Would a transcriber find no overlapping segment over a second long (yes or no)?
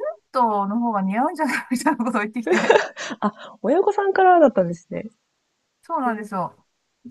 yes